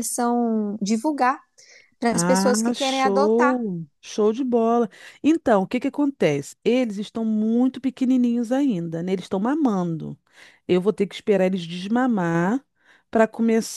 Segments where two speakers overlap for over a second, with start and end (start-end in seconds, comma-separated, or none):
2.1-3.5